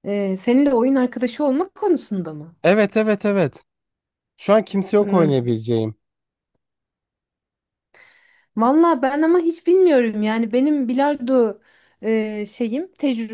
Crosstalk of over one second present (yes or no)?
no